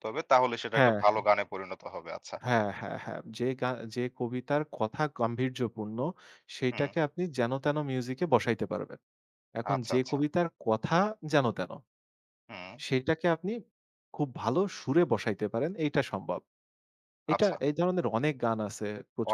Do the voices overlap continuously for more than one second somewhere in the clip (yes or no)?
no